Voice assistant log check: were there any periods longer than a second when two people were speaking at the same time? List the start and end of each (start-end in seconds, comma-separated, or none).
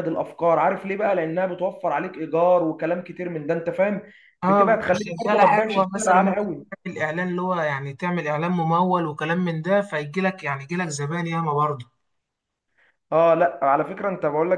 4.4-6.4